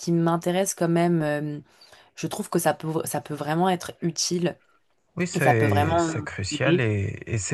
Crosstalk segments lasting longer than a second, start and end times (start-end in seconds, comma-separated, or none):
5.3-6.9